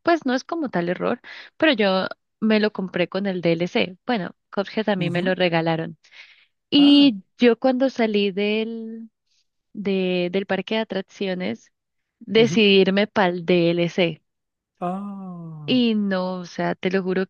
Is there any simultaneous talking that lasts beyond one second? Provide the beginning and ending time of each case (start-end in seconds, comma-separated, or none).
none